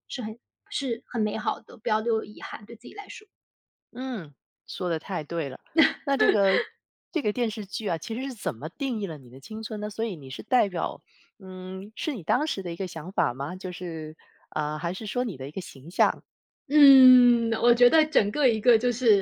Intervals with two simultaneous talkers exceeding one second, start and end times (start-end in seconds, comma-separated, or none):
none